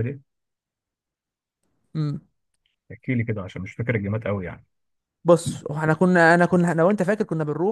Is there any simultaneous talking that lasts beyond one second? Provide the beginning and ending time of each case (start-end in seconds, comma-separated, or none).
none